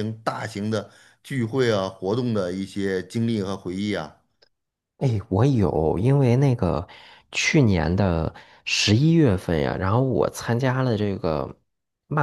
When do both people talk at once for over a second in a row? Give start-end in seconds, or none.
none